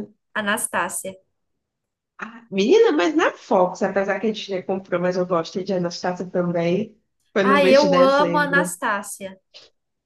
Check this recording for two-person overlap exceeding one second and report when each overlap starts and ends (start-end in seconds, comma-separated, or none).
7.4-8.8